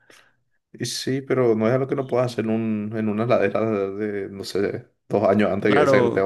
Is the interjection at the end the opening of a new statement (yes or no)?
yes